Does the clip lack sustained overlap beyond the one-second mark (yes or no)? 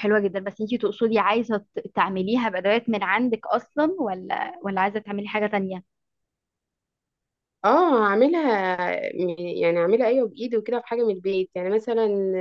yes